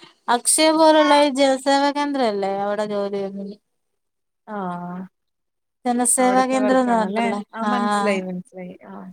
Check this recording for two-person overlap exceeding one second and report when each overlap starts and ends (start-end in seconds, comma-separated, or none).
6.2-8.1